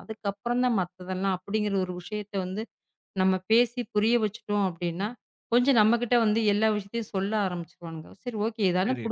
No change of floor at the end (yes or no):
yes